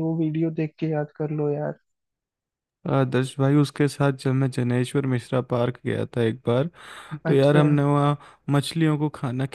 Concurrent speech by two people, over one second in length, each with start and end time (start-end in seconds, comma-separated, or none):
none